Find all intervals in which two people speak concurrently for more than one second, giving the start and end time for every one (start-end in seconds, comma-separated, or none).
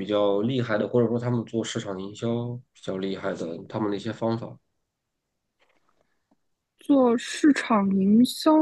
none